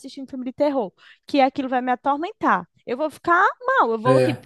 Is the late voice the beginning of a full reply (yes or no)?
no